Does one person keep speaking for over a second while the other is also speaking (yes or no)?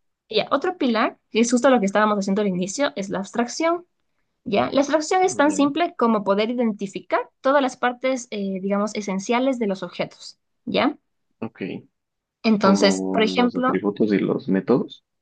yes